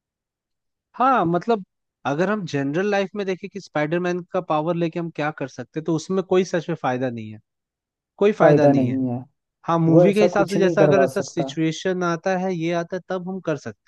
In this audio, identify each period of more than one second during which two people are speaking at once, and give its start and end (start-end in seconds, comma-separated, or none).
9.9-11.5